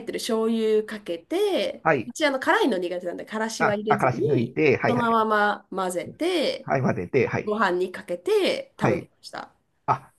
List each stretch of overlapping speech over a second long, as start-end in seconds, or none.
3.6-5.2